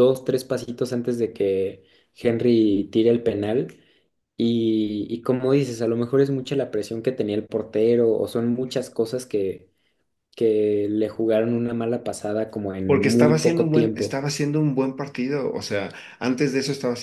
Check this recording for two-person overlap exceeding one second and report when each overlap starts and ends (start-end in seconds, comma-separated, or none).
12.9-14.2